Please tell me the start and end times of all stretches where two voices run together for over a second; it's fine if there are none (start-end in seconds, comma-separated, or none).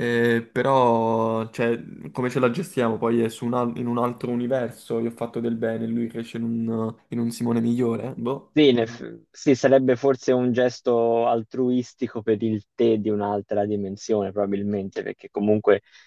none